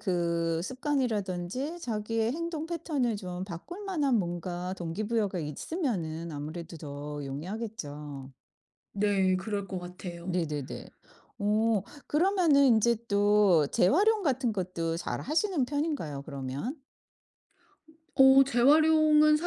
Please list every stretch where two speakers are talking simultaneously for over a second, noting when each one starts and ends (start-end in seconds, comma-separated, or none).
none